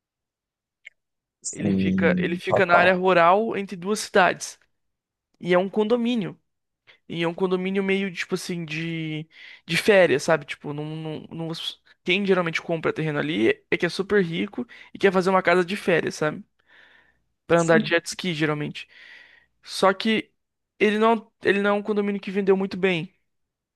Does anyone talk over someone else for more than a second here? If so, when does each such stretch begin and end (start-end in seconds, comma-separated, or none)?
1.5-2.9